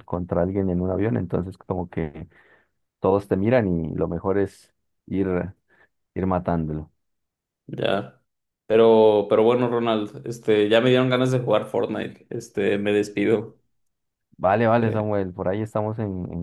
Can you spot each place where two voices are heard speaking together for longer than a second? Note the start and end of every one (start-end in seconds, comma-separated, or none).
none